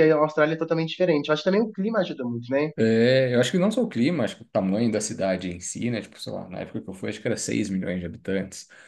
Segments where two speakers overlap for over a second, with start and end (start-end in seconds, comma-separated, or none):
none